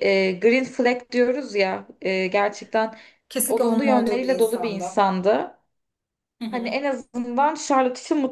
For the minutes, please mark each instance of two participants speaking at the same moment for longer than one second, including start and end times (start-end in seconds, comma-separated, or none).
3.5-5.0